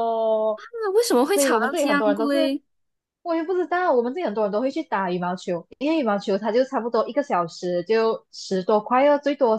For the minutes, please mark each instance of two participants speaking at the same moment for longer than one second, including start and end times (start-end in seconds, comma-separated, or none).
1.3-2.5